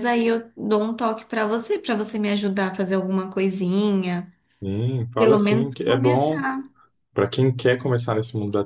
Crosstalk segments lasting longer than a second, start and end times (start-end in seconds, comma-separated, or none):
5.2-6.5